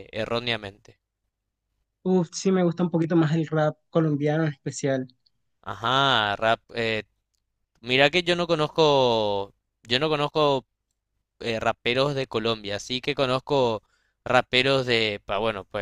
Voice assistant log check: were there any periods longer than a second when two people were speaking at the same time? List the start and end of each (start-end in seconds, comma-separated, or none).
none